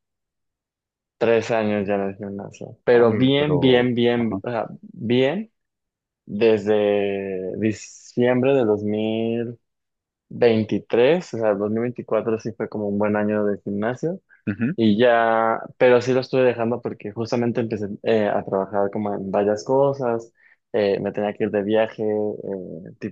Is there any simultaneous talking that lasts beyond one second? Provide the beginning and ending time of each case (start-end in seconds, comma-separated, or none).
2.9-4.4